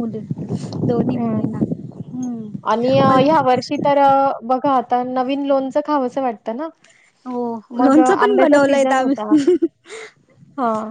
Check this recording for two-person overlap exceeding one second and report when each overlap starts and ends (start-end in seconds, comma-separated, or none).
7.8-9.3